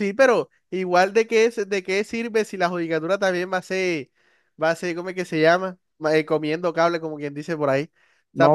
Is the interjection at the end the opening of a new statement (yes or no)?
yes